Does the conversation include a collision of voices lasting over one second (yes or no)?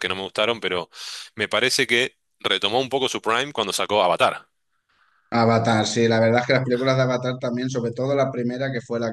no